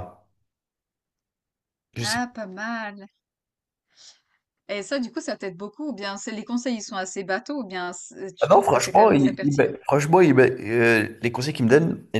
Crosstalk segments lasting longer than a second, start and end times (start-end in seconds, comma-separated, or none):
8.4-9.7